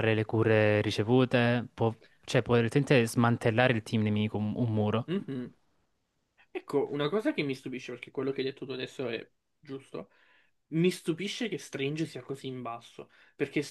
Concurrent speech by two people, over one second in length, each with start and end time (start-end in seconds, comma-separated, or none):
none